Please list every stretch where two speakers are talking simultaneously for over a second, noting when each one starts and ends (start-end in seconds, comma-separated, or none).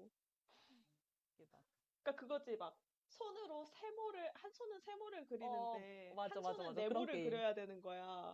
5.4-7.4